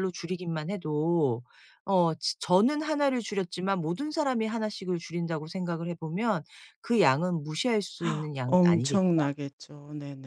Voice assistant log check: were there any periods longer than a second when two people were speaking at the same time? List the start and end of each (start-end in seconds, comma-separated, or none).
none